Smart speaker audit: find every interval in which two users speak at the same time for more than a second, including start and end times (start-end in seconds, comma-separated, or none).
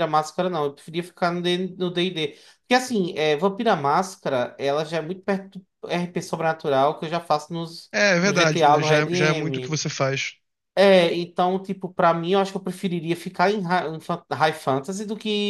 7.9-9.8